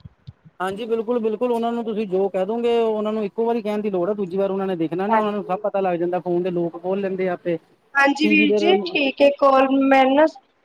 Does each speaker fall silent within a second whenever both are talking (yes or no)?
yes